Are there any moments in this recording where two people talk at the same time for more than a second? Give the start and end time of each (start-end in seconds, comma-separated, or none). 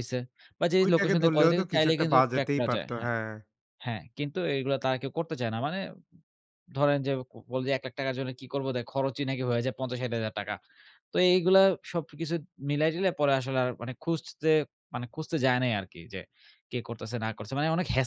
0.8-3.1